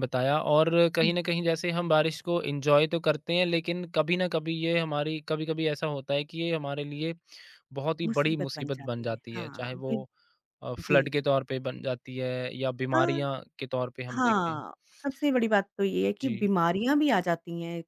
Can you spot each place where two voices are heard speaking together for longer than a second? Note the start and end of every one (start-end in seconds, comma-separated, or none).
8.1-10.0